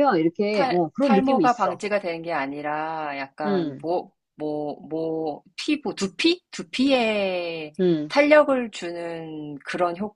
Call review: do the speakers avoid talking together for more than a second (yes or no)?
no